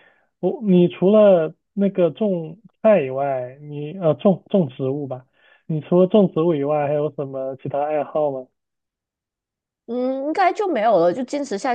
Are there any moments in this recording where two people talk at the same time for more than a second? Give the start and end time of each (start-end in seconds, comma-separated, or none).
none